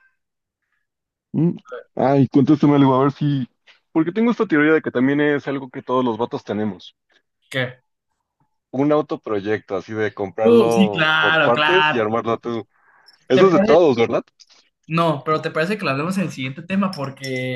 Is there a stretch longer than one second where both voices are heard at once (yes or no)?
yes